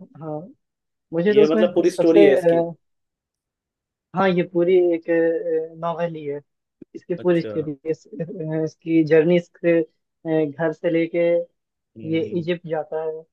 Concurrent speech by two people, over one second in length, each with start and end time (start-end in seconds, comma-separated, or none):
1.3-2.6